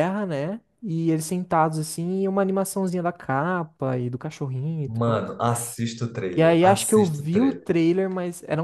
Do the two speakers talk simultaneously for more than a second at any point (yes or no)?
yes